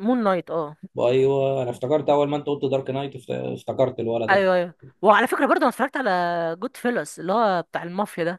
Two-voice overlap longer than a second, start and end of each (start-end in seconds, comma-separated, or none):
none